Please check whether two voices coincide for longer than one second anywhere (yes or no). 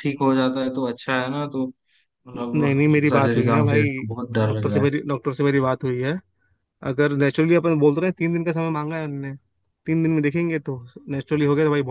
yes